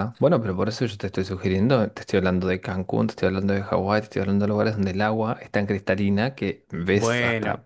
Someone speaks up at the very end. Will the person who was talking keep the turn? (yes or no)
yes